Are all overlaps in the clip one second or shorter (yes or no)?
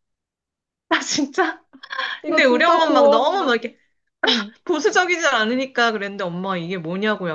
no